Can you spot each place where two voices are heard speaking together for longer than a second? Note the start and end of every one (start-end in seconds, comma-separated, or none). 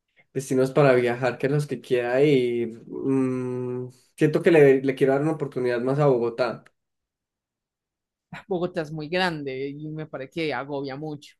none